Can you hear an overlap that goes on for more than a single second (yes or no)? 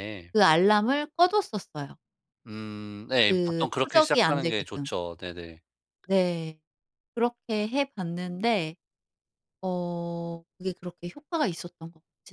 yes